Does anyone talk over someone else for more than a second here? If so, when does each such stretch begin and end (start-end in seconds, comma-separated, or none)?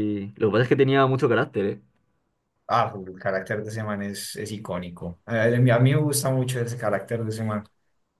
none